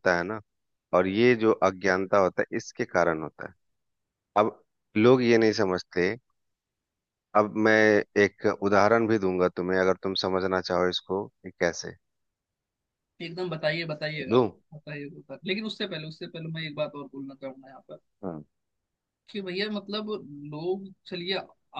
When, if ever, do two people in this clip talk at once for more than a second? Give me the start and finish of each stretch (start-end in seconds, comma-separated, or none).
none